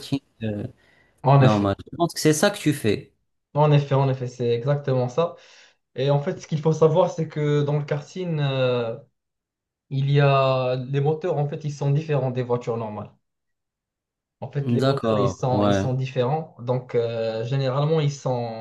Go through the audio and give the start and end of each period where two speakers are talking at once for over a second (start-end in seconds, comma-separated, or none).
14.6-15.8